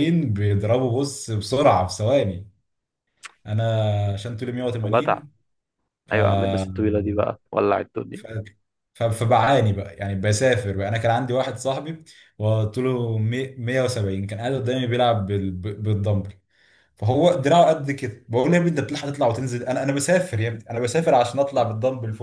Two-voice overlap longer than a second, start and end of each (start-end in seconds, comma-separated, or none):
none